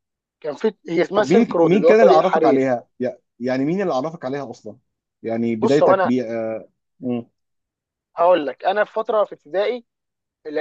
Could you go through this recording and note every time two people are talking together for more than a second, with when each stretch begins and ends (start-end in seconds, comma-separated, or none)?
1.1-2.6